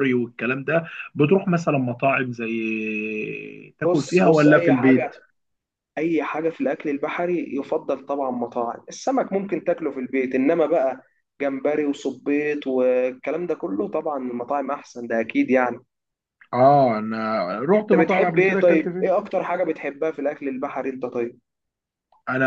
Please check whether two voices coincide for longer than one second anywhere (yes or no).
yes